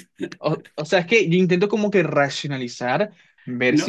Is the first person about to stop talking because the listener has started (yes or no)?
yes